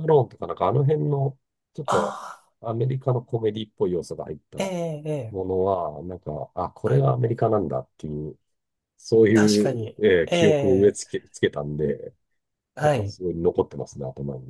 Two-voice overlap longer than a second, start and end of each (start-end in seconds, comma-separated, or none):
9.3-11.0